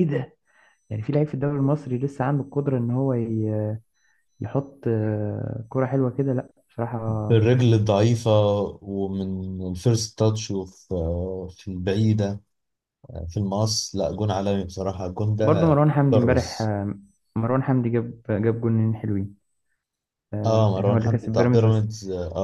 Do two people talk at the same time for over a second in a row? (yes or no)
yes